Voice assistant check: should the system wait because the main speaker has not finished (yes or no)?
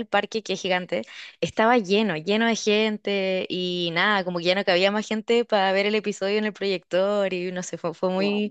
yes